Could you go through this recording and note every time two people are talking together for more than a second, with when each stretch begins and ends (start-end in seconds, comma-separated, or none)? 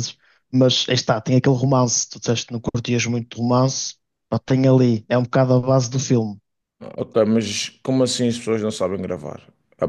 none